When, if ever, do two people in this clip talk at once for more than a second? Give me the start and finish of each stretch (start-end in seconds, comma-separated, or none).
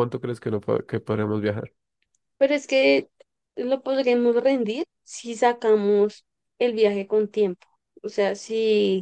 none